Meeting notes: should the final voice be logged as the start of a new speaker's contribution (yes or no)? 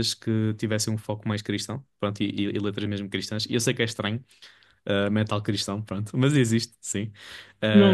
yes